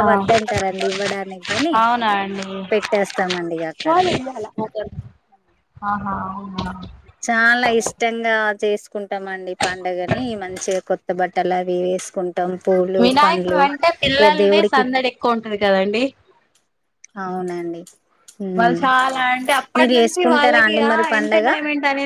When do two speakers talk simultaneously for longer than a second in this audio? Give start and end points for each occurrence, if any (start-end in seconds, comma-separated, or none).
19.8-21.5